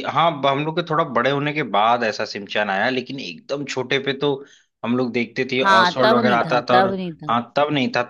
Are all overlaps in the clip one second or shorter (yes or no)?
no